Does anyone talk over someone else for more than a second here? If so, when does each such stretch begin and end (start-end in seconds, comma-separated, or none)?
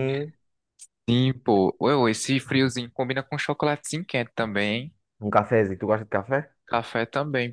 none